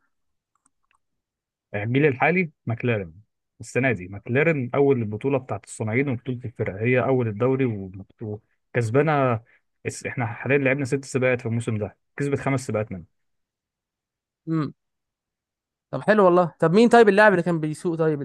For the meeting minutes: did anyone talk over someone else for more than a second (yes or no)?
no